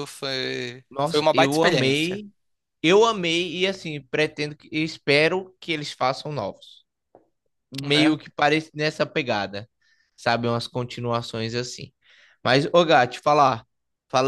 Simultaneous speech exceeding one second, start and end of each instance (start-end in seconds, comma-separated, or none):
0.9-2.2